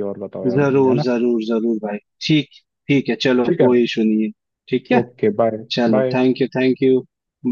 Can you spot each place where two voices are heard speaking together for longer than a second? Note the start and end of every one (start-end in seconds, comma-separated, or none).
none